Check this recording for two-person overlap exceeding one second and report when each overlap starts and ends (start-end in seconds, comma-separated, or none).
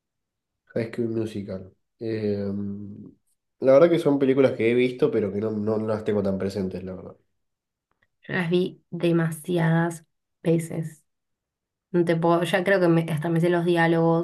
none